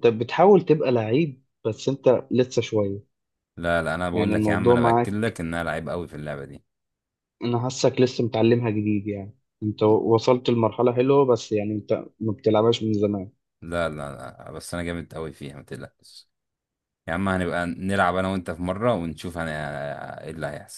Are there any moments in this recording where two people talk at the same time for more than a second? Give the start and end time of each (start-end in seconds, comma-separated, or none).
4.1-5.4